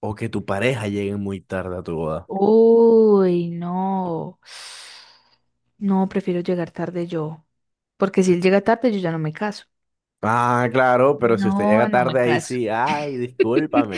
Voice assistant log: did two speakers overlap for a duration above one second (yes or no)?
yes